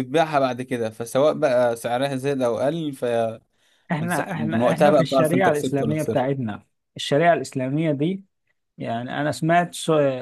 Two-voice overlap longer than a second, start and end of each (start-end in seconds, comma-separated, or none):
4.1-6.3